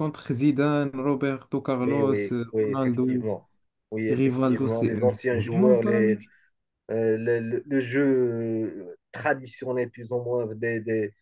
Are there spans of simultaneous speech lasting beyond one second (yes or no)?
yes